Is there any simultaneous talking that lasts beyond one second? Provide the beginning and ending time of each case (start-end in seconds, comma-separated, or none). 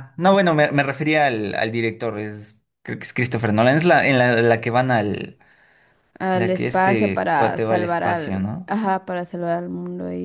6.3-8.7